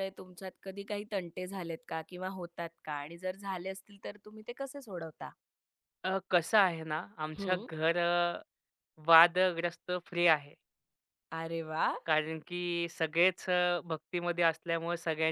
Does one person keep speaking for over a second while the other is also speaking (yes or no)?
no